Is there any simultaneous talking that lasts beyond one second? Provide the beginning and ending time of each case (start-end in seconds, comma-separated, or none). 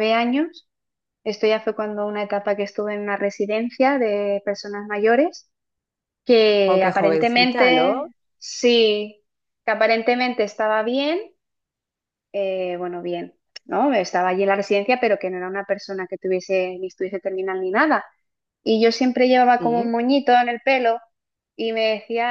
6.7-8.1